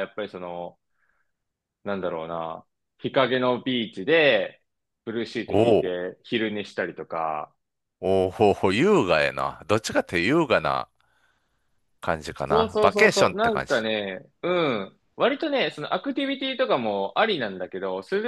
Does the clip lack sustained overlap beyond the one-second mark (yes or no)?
no